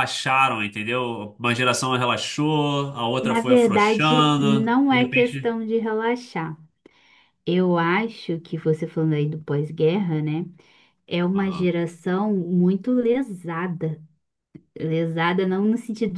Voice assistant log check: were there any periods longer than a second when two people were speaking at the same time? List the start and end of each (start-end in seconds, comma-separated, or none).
3.2-5.6